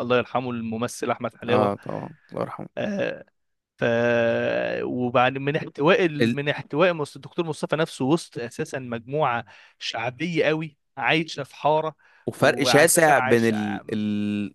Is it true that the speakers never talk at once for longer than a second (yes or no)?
no